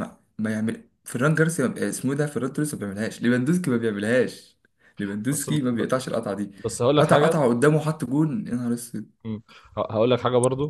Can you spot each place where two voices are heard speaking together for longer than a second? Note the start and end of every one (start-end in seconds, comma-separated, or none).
none